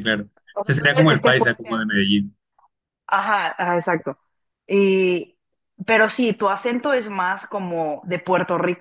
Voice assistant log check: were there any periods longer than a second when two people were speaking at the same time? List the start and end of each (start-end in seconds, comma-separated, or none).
0.6-1.9